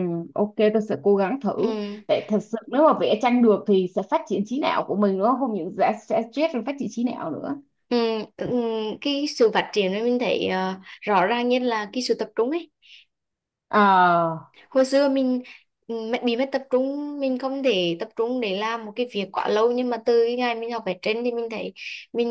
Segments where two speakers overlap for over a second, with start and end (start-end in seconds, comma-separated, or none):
none